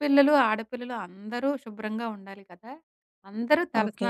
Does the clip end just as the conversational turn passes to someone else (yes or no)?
no